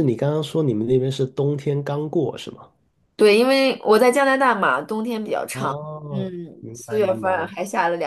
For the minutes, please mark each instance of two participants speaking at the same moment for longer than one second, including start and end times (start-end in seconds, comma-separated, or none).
5.5-7.5